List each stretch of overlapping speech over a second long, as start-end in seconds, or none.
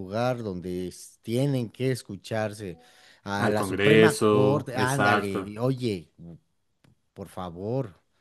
3.5-5.5